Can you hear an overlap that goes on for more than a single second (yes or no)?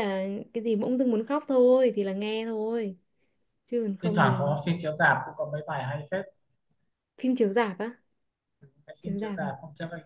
no